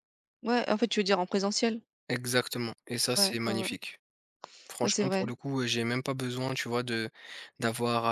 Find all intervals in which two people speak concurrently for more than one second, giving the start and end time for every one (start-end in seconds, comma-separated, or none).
none